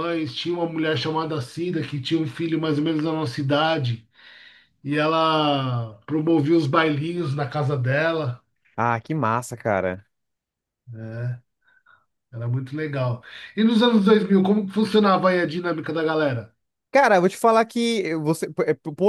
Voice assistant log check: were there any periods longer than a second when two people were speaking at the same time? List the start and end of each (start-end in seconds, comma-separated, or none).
none